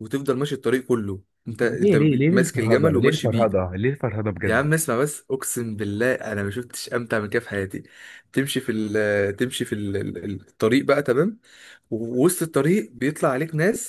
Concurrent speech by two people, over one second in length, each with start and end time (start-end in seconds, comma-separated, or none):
1.6-3.5